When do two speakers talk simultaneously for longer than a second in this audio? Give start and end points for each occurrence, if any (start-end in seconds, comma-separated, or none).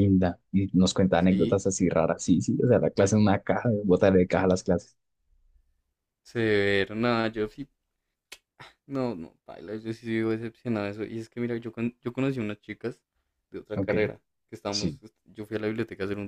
none